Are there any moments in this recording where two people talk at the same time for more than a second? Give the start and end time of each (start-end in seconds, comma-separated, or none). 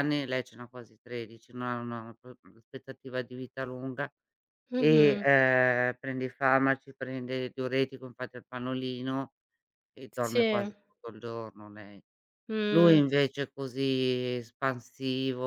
none